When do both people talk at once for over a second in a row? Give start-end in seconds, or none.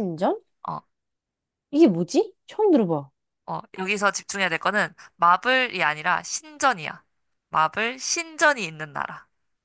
none